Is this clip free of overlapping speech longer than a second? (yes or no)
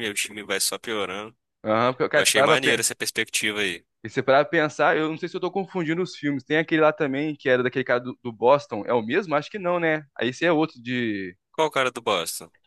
yes